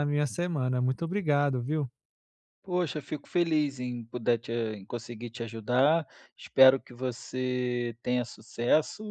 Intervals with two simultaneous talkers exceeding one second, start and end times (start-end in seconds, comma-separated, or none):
none